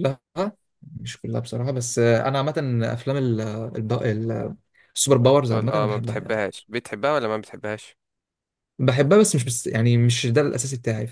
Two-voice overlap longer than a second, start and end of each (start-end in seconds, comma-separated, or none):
5.1-6.4